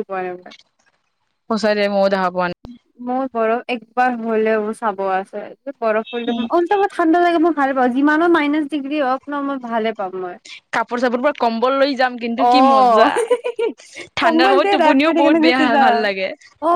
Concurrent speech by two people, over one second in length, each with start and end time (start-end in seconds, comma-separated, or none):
14.2-16.0